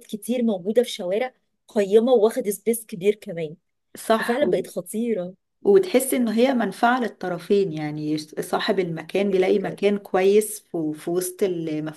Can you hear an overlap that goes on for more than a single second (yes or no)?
no